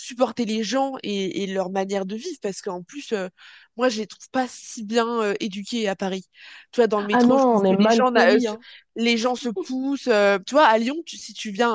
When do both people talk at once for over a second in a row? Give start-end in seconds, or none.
7.1-8.6